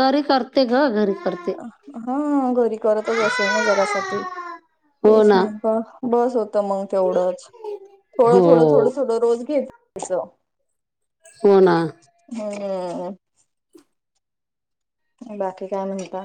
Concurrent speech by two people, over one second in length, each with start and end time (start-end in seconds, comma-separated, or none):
none